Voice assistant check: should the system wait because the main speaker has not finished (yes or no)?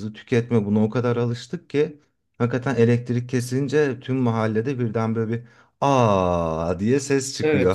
no